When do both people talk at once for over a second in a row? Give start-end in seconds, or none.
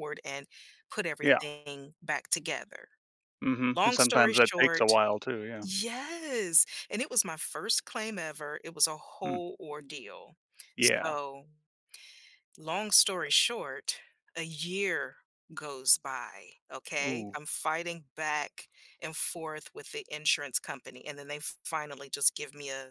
3.7-5.0